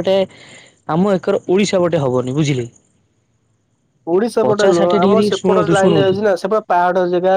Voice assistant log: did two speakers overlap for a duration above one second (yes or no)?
yes